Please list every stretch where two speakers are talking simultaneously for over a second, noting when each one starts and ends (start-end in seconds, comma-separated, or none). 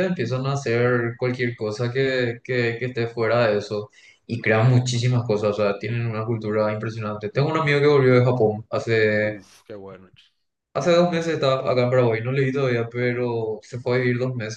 none